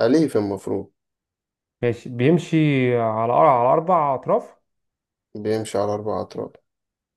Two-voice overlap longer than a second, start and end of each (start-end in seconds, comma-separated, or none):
none